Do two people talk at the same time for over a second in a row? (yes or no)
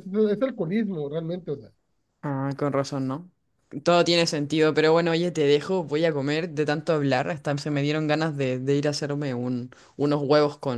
no